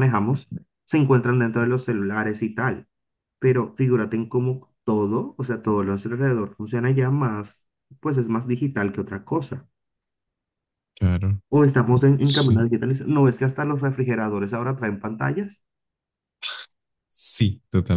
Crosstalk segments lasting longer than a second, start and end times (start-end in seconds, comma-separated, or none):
none